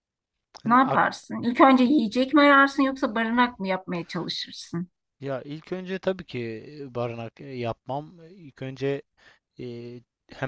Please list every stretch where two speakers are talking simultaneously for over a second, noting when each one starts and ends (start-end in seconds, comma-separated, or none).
none